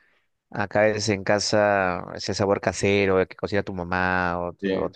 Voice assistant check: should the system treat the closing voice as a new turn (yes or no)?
no